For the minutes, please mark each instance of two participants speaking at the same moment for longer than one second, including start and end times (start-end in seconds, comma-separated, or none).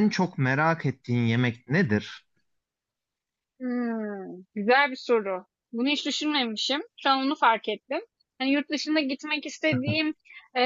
none